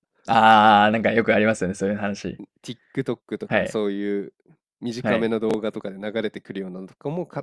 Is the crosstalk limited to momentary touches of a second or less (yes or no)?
yes